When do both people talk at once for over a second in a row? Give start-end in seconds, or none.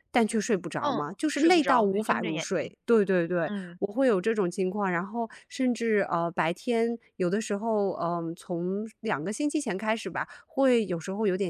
0.8-2.7